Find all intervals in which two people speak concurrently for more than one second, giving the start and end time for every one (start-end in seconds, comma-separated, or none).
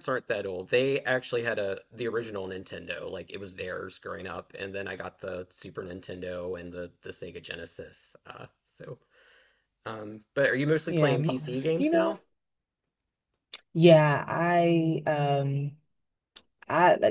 10.9-12.2